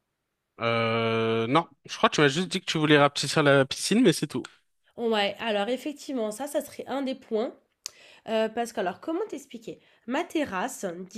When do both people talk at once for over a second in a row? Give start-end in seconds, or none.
none